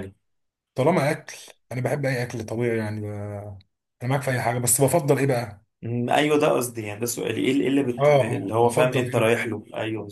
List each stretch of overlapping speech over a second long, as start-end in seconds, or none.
8.0-9.4